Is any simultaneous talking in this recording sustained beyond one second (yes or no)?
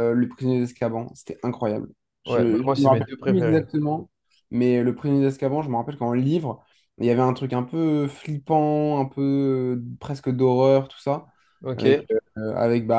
yes